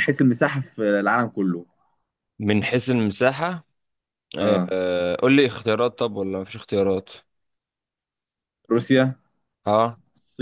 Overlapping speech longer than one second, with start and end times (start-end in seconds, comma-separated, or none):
none